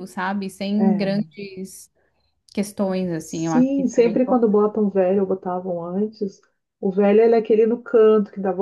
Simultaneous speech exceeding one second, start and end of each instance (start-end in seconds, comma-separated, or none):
3.1-4.4